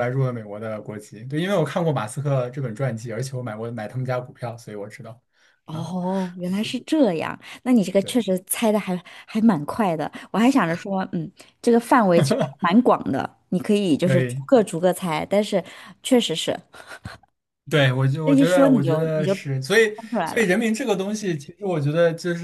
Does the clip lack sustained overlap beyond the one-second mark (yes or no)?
no